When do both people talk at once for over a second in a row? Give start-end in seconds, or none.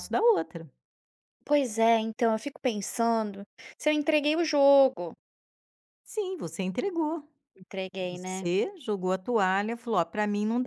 none